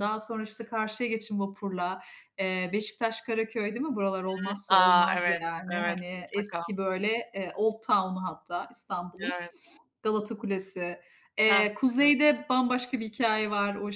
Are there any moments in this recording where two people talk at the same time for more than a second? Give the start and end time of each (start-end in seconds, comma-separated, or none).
4.7-6.6